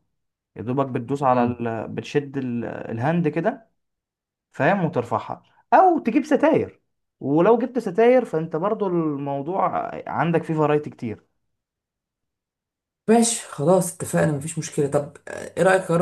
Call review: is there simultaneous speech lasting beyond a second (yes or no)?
no